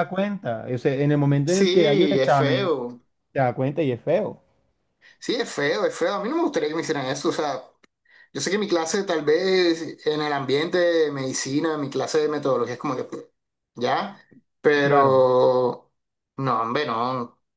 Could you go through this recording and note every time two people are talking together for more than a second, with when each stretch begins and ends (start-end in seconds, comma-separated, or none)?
1.4-2.7